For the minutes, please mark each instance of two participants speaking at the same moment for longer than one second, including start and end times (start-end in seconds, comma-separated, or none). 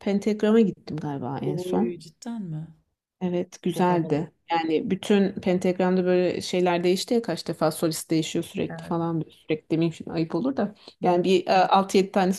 none